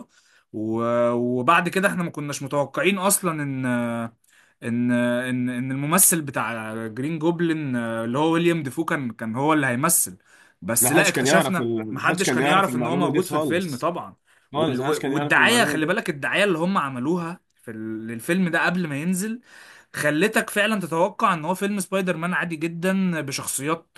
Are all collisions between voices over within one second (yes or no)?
no